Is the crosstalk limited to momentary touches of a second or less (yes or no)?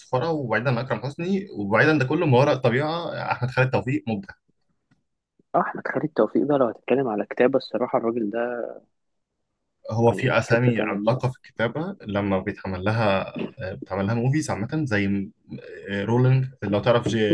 no